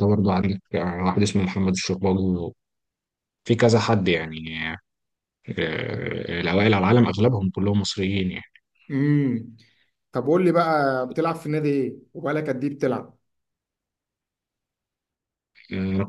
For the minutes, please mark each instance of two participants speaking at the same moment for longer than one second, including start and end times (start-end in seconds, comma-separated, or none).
none